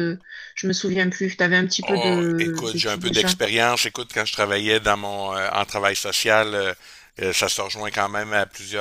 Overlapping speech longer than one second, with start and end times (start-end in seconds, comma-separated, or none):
1.9-3.3